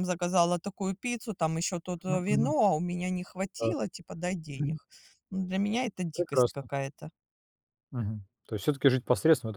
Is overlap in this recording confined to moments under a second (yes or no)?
yes